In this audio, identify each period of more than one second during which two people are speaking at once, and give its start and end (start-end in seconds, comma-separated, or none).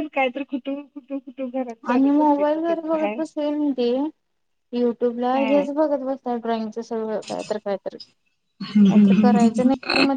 1.9-3.2